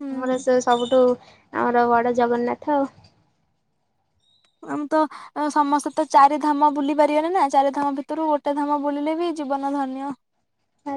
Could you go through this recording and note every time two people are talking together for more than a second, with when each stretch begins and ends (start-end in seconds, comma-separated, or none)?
none